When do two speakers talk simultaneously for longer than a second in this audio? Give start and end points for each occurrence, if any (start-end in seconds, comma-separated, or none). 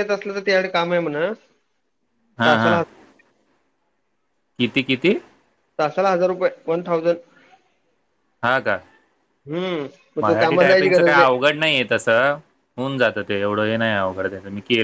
10.2-11.4